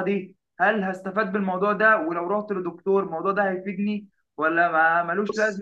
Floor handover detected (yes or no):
no